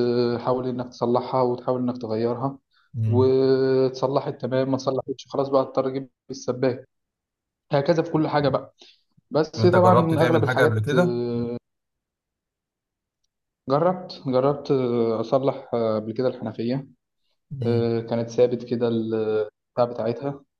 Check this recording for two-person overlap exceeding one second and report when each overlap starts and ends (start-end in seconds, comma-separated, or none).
9.6-11.2